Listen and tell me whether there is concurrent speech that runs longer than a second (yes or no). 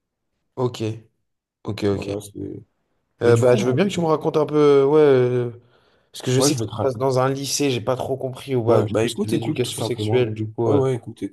yes